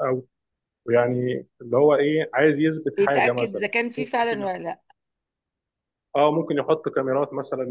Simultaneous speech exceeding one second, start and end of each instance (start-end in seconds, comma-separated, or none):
3.0-4.5